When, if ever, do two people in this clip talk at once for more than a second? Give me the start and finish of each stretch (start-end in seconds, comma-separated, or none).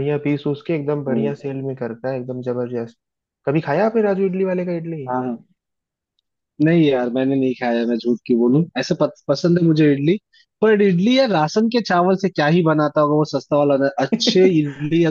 none